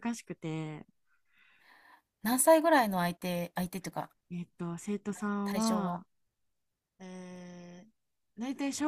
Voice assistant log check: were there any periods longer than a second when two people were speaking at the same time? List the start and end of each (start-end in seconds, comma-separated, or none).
none